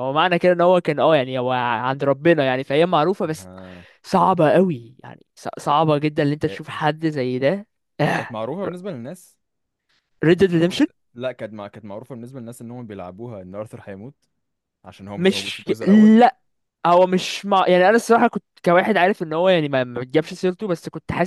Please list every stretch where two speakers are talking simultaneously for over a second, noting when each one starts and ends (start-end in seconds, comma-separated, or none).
none